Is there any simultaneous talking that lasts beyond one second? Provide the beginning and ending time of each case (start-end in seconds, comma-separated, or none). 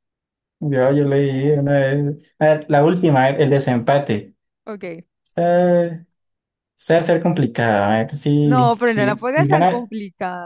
8.5-9.9